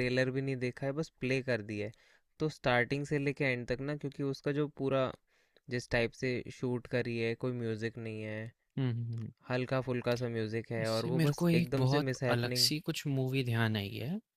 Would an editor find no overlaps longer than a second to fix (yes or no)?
no